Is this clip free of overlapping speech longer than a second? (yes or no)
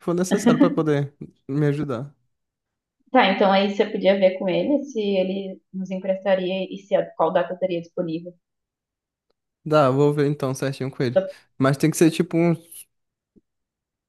yes